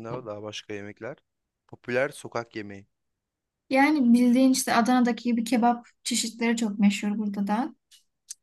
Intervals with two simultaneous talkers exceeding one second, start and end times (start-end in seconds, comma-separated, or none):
none